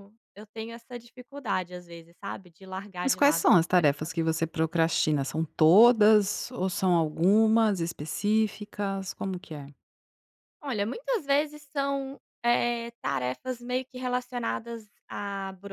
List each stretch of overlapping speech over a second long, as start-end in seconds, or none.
3.0-4.3